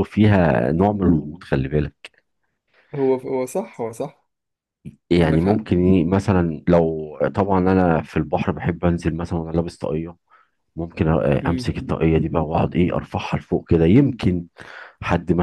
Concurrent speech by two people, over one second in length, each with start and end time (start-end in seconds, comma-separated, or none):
none